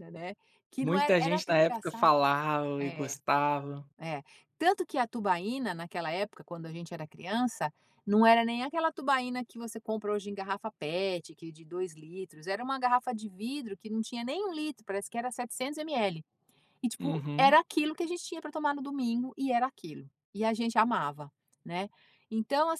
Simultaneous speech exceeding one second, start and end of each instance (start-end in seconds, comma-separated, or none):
0.8-2.1